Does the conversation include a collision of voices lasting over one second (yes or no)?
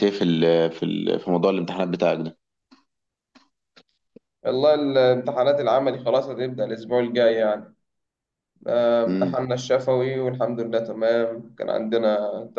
no